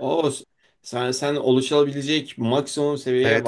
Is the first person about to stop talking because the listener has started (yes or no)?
yes